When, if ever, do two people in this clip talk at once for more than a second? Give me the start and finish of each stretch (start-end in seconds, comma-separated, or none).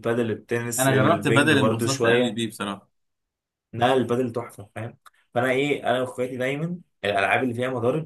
0.8-2.4